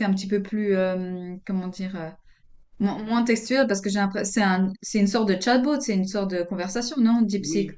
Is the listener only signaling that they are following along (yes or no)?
no